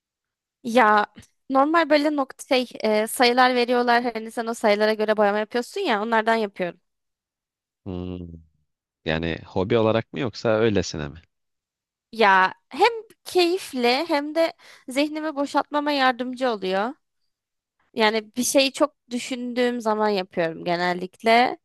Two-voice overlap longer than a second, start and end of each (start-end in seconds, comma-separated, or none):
none